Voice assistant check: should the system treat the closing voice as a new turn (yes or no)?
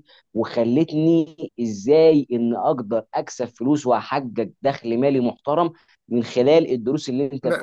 yes